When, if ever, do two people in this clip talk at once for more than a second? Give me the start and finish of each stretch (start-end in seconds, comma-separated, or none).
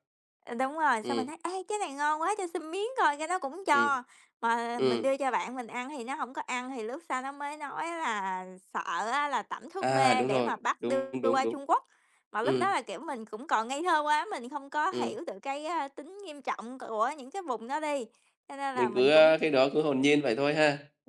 9.8-11.6